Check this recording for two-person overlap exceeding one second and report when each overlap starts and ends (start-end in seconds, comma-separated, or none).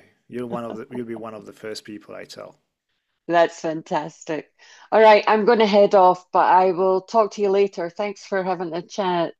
none